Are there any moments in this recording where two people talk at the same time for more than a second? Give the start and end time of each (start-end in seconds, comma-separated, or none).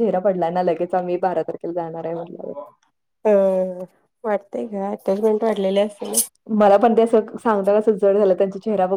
none